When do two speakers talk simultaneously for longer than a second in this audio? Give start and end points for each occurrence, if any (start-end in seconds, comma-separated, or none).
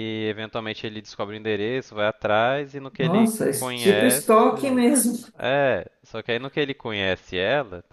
3.0-4.9